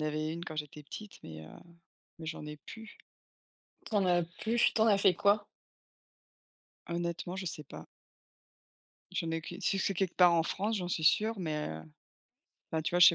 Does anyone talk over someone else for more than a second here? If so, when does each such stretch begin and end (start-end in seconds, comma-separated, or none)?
none